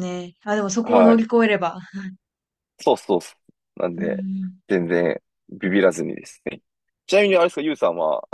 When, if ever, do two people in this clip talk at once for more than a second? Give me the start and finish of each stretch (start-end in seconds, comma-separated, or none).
none